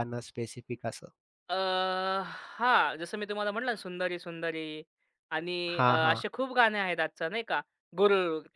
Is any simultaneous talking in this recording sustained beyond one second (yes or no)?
no